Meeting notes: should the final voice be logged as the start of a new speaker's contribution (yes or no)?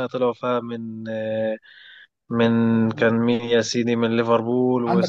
yes